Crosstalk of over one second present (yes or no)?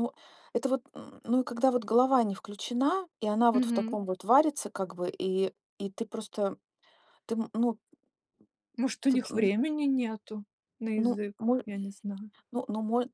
no